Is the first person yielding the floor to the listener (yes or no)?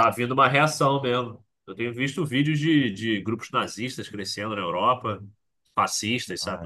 yes